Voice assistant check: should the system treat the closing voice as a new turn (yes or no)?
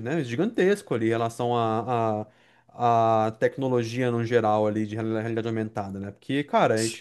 no